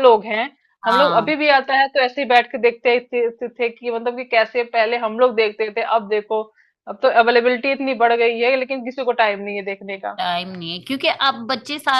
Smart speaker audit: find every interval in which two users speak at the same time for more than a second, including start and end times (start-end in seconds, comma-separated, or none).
none